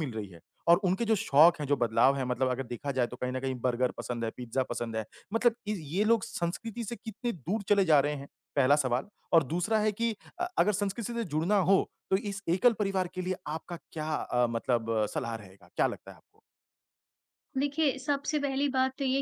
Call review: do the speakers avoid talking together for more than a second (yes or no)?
yes